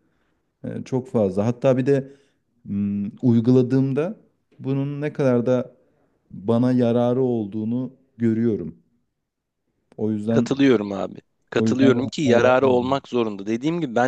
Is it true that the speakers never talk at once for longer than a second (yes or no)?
no